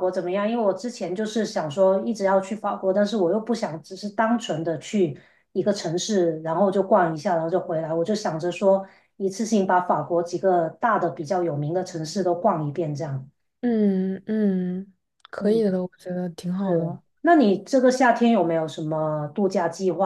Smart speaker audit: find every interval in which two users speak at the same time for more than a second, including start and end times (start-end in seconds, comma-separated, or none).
none